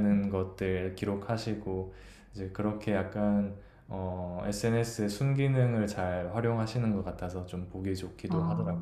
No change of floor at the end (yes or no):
no